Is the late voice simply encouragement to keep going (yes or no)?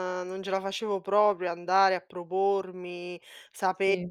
yes